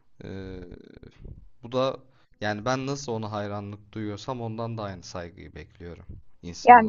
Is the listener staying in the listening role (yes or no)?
no